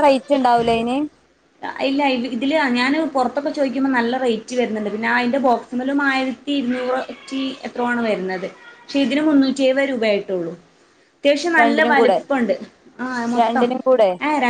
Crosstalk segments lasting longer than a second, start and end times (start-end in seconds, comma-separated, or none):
none